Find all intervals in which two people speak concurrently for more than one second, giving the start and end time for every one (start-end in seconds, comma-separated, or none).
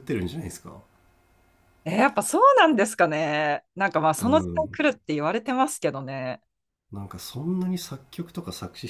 none